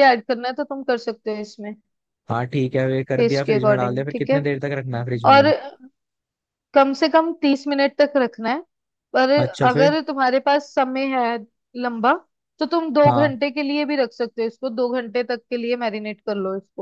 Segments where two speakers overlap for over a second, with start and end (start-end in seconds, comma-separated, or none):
3.2-4.4